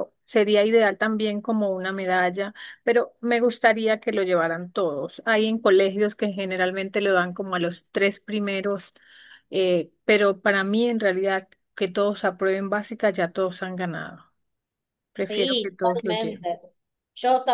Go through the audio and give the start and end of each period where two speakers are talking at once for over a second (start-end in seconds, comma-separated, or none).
15.2-16.5